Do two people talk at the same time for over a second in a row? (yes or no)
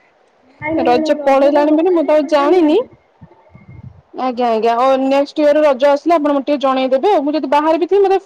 yes